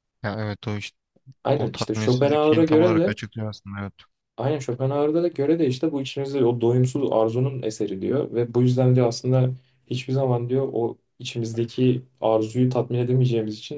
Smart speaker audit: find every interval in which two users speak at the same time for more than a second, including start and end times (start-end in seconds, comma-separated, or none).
1.6-3.2